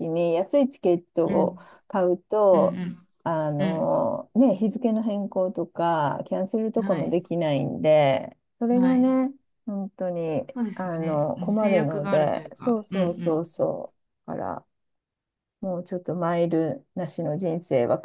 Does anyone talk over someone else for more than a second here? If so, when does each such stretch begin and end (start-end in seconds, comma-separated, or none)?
10.5-13.4